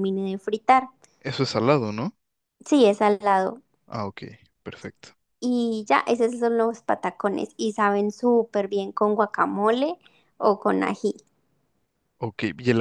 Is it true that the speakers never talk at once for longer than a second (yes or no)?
yes